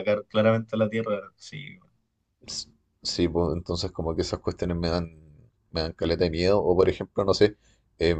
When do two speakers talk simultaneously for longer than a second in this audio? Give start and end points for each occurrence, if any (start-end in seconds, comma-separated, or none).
none